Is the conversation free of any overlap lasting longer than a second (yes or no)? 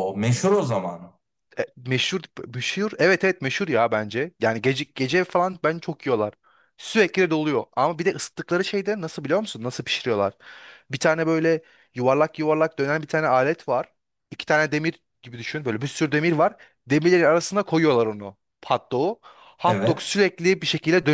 yes